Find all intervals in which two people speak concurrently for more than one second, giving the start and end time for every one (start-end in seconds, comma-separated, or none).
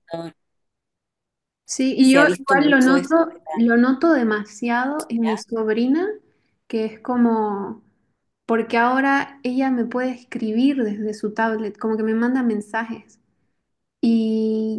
2.0-3.2